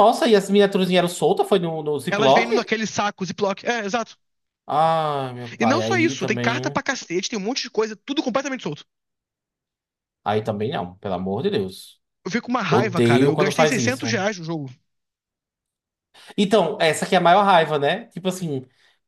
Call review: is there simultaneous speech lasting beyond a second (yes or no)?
yes